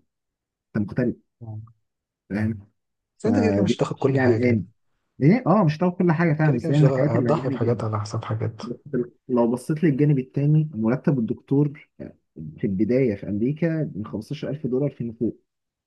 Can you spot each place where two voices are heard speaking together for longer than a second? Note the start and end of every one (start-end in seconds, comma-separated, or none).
3.2-4.6, 6.4-7.9